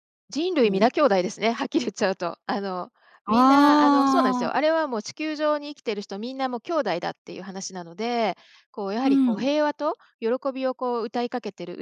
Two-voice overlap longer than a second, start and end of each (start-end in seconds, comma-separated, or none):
3.3-4.6